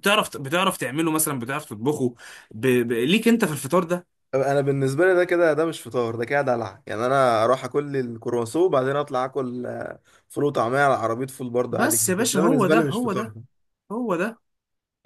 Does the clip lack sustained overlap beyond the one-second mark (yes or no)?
no